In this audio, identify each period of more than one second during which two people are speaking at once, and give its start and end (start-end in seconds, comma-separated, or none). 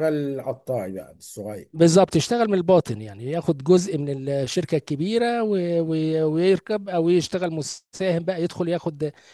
none